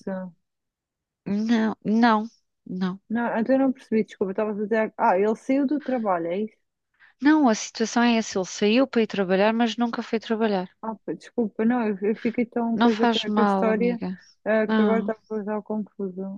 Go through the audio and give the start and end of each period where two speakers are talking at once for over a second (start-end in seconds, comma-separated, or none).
12.7-14.0